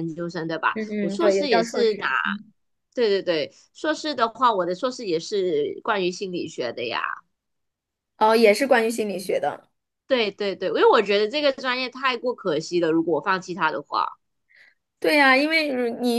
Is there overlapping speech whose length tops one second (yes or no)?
yes